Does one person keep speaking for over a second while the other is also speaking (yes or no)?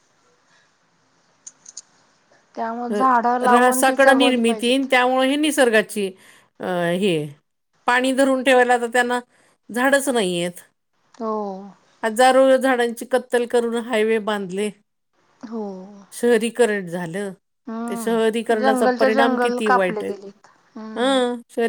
yes